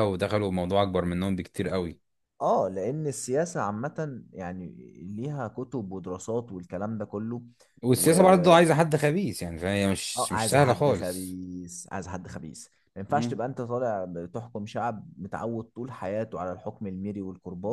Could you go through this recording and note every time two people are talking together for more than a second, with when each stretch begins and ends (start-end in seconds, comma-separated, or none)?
10.2-11.4